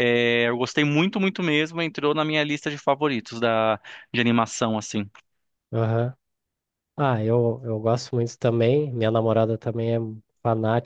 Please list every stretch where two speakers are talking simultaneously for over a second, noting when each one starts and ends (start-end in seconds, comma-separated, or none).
none